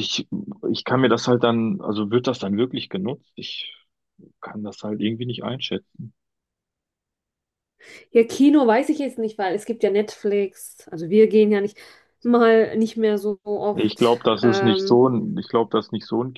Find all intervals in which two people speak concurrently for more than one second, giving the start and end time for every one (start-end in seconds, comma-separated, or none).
13.7-15.1